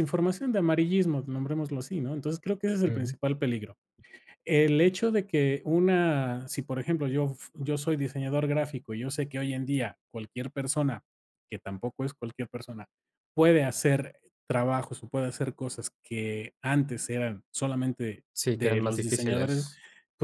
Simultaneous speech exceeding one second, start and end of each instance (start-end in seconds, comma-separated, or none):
18.3-19.6